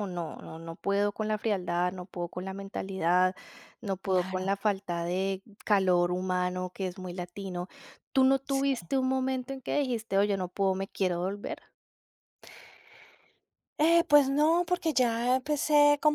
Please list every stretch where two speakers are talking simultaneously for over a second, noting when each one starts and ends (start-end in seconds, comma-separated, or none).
none